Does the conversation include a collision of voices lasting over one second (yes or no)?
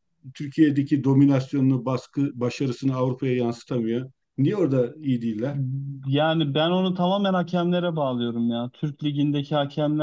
no